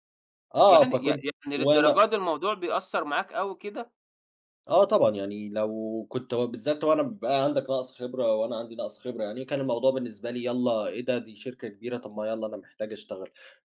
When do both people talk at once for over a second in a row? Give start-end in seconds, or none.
0.7-2.0